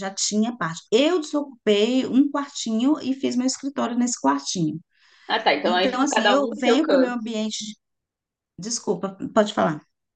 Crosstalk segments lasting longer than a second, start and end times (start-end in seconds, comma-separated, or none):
5.6-7.2